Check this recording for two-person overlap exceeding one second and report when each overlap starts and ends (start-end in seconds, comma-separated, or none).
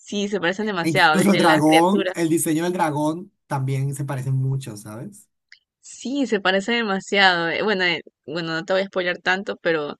0.8-2.3